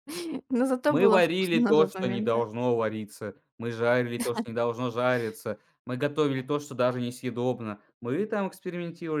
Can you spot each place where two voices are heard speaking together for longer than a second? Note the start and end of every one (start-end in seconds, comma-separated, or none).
0.9-2.4